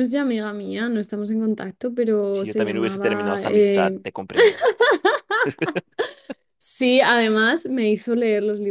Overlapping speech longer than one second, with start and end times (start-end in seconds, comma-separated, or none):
2.3-4.0